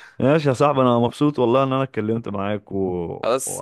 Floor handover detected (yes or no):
yes